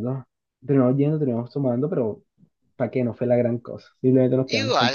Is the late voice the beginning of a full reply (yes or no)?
yes